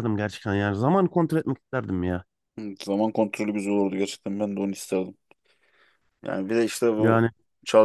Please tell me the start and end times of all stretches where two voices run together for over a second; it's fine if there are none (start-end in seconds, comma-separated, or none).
none